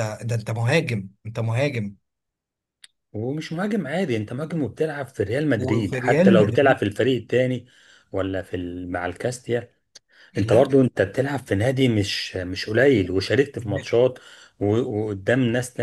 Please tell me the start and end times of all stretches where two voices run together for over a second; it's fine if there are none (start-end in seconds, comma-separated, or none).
5.6-6.8